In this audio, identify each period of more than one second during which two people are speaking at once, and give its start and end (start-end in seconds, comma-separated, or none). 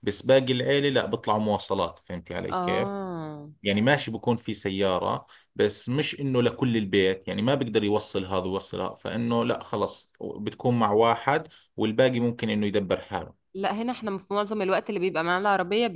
none